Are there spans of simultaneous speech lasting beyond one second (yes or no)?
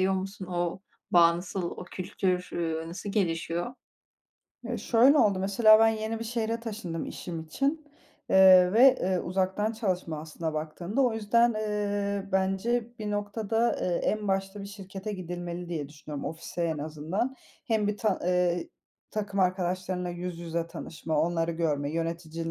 no